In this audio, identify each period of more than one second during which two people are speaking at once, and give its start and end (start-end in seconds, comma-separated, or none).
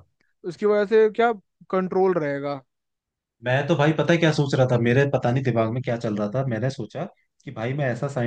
none